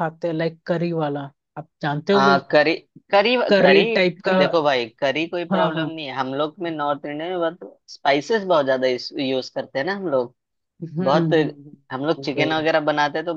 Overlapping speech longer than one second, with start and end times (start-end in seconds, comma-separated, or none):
none